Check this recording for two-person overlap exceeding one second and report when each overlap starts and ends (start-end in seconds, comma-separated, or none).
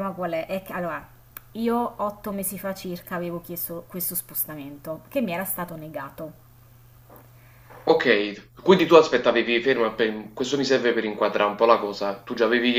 none